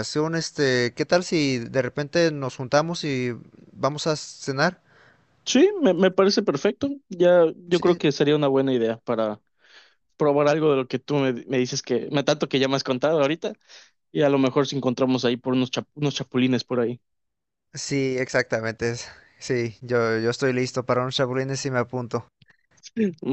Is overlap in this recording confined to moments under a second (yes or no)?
yes